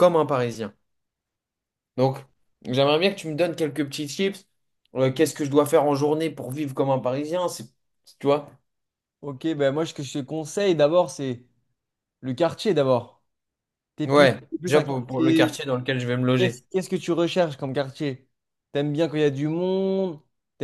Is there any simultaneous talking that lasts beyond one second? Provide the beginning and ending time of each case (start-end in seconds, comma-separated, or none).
14.1-15.6